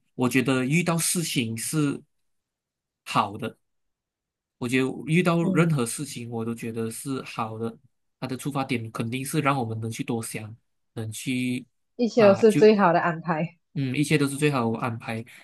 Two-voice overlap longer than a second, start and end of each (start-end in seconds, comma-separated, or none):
none